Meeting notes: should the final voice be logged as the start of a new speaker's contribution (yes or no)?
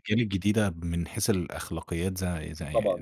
yes